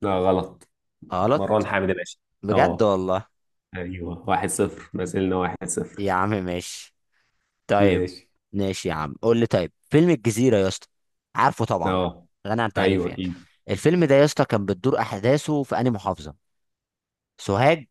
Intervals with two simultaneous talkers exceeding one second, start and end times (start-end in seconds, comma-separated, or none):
none